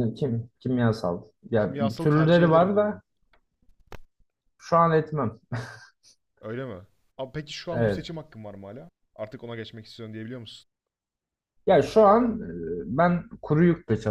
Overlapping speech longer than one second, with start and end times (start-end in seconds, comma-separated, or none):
1.6-3.0